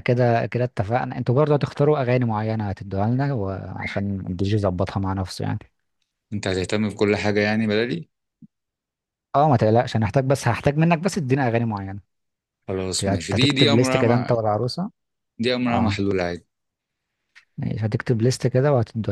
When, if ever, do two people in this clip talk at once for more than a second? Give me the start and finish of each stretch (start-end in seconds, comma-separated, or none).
13.0-14.3